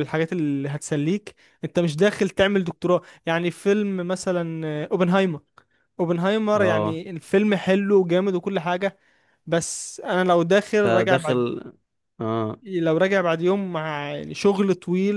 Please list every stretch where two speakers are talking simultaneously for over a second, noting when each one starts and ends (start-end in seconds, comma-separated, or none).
none